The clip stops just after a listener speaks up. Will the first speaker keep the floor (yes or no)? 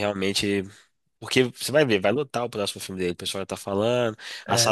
yes